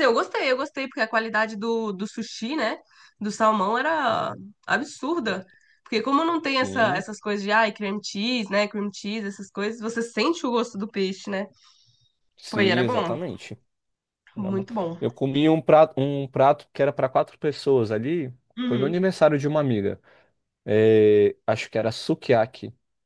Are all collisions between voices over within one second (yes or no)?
yes